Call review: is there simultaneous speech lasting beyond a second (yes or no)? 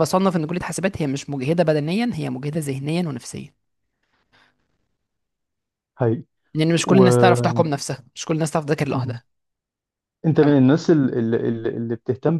no